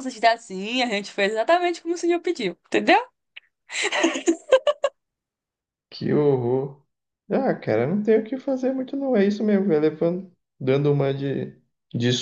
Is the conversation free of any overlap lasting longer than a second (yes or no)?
yes